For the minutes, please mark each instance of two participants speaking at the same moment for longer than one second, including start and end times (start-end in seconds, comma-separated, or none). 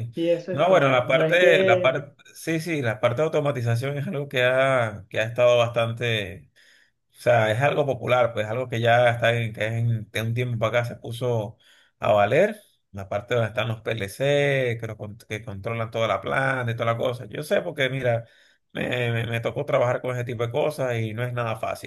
0.5-2.0